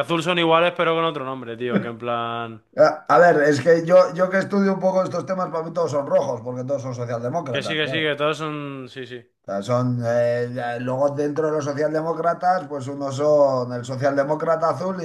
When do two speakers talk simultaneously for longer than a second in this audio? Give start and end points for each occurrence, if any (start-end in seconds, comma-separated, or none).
none